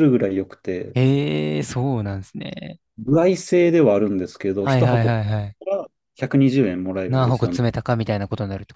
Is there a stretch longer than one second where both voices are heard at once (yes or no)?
no